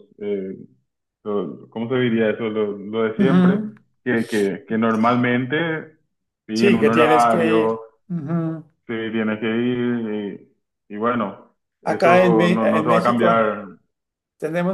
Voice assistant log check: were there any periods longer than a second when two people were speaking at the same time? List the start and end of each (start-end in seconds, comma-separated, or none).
6.5-7.8, 11.8-13.5